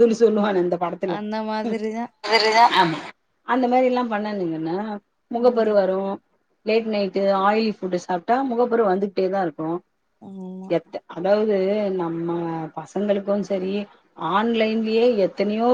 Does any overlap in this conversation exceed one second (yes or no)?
no